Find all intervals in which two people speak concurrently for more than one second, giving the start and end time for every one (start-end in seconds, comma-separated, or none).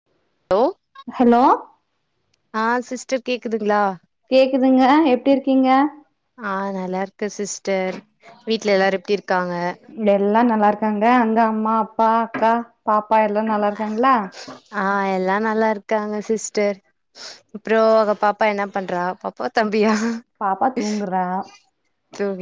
none